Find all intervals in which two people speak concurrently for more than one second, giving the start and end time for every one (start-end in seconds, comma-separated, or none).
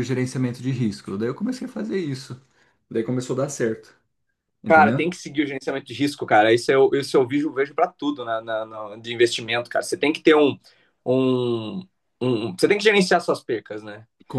none